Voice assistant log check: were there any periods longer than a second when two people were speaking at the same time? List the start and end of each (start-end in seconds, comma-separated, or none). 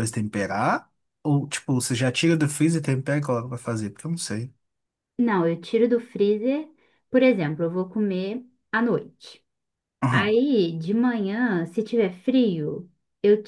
none